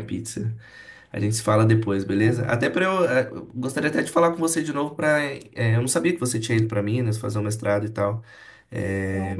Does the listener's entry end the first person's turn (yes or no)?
no